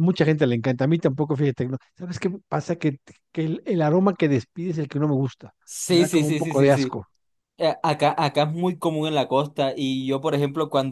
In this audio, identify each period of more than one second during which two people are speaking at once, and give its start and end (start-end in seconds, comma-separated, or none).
5.6-7.0